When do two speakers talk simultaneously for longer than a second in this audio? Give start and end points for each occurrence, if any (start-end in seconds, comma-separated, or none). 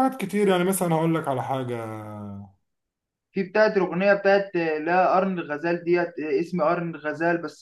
none